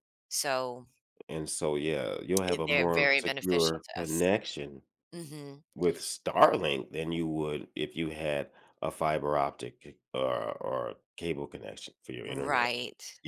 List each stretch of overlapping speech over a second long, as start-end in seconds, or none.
2.5-4.3